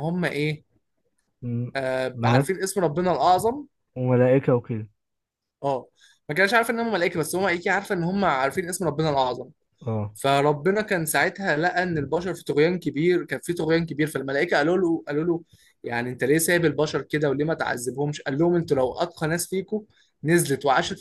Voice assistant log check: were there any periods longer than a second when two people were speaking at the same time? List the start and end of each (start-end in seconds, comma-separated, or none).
none